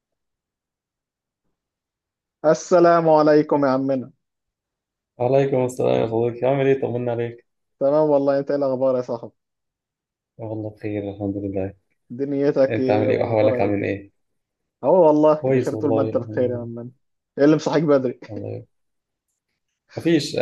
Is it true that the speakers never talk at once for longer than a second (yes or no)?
no